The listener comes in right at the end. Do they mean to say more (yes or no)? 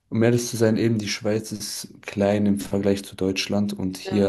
no